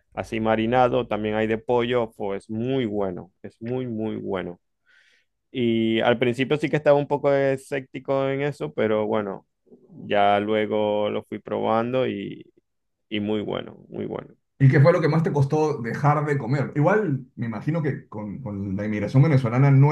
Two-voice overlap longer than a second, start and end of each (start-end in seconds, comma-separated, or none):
none